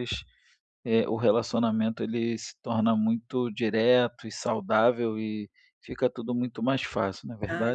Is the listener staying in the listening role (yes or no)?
no